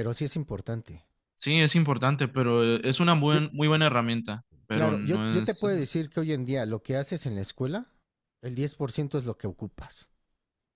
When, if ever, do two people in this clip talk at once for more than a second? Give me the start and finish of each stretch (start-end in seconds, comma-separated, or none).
4.7-6.1